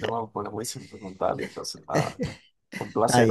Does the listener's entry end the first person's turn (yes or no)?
no